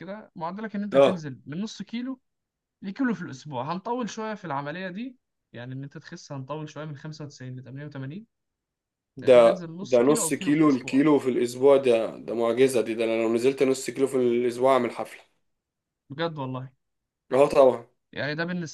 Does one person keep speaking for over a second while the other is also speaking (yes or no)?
yes